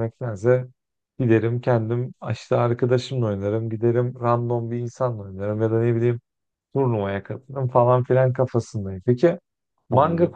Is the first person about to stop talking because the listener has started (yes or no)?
no